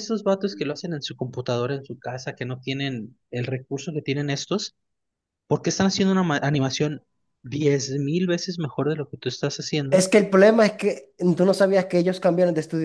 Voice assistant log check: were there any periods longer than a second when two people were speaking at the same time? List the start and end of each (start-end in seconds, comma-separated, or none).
none